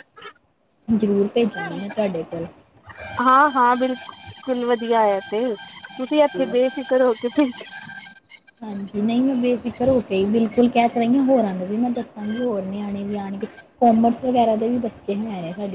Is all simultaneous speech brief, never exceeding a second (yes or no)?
yes